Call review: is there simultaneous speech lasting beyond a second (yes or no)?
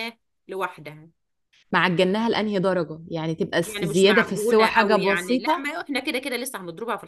yes